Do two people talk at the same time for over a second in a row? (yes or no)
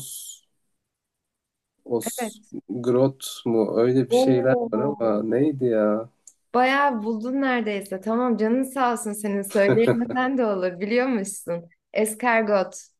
yes